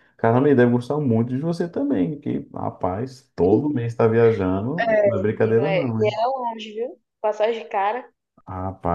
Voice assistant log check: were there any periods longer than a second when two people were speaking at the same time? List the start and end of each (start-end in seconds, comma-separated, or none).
4.8-6.2